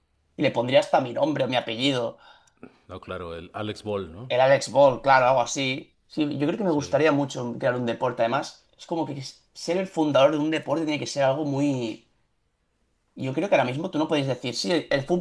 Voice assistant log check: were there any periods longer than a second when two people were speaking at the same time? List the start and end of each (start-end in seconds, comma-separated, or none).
none